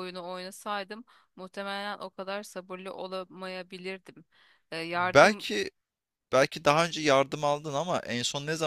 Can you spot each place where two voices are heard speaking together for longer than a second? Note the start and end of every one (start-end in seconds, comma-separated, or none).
none